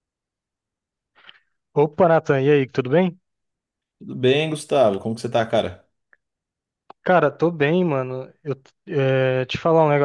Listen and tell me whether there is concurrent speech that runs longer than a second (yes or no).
no